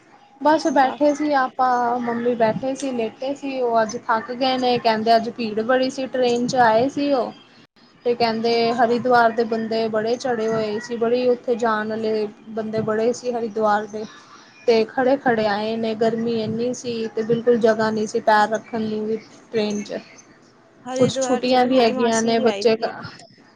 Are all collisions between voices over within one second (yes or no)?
no